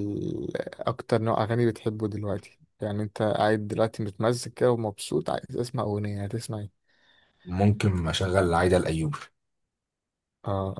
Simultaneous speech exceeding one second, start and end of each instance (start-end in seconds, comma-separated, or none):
none